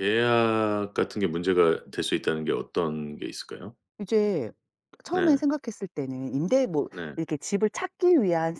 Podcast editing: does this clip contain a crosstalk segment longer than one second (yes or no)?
no